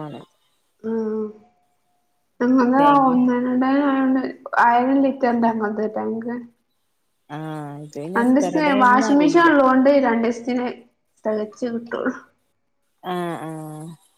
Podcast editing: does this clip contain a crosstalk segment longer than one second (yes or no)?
yes